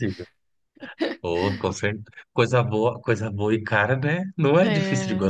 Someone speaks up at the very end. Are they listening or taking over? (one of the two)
taking over